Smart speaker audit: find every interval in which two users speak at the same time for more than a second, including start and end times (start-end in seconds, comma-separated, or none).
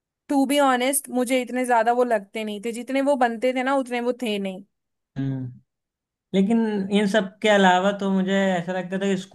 none